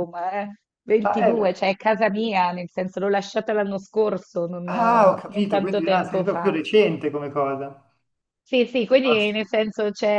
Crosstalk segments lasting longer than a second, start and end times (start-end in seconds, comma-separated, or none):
4.7-6.6